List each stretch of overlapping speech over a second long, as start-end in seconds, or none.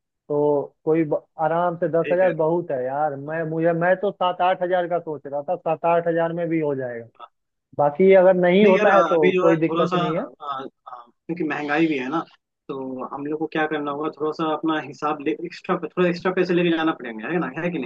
8.6-10.2